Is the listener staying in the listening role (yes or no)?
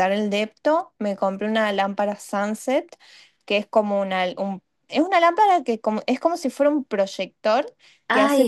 no